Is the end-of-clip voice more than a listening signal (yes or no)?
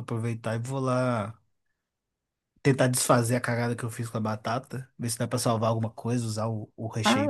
no